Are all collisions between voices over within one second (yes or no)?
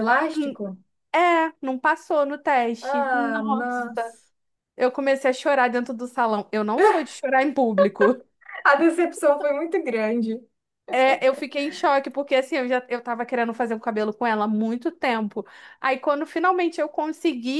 no